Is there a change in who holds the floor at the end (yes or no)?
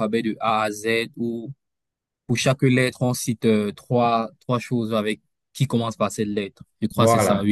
yes